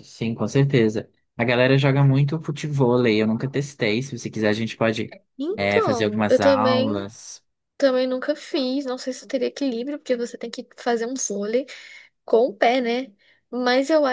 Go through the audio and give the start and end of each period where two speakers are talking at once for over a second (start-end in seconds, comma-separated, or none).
5.5-7.1